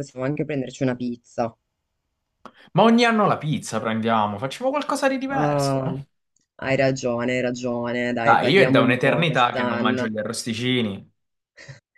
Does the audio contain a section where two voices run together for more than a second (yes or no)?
yes